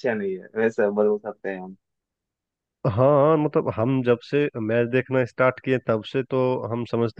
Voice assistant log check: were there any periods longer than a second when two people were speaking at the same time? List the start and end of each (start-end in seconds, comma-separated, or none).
none